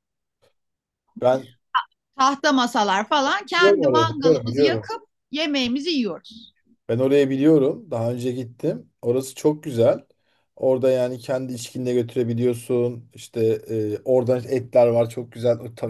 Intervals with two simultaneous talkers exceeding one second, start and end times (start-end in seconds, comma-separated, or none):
3.6-4.9